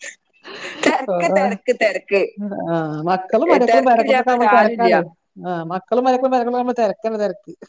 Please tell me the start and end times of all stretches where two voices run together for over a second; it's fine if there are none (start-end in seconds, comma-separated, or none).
3.5-4.9